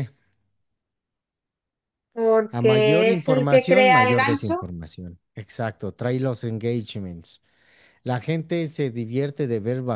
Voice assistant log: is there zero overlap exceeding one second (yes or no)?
no